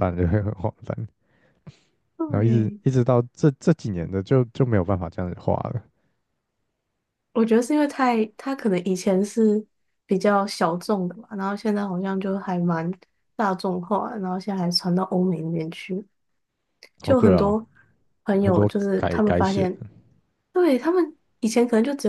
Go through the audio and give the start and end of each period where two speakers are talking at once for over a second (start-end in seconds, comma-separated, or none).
18.4-19.7